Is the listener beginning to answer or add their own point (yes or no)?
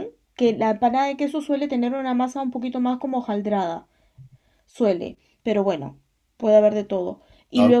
no